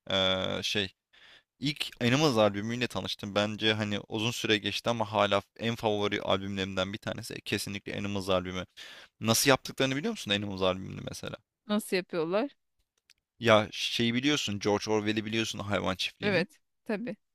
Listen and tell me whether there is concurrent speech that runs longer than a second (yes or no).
no